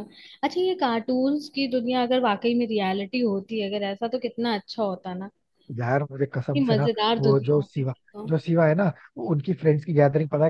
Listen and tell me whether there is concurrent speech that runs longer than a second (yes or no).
yes